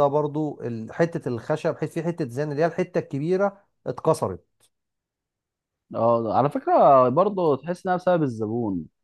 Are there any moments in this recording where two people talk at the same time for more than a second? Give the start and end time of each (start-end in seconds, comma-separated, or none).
none